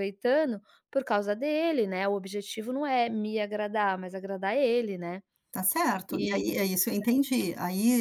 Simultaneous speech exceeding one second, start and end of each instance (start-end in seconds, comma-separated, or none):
none